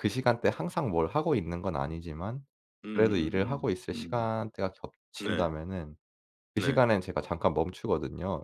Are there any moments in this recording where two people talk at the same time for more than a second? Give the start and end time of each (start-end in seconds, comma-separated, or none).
2.9-4.3